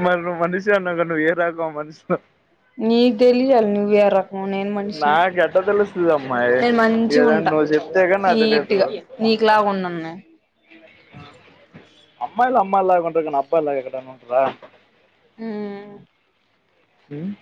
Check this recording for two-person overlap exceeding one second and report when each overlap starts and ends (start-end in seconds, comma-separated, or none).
none